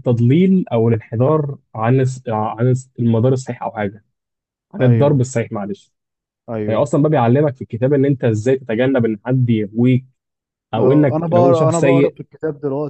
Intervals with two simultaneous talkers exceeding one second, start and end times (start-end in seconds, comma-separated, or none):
10.8-12.2